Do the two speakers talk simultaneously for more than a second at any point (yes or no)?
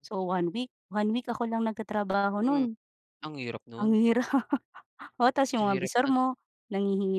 no